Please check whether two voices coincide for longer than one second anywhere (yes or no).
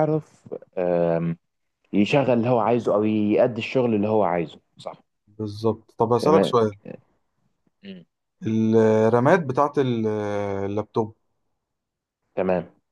no